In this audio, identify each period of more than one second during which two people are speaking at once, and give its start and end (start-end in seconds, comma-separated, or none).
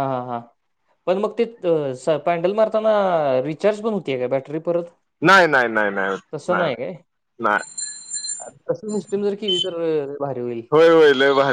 none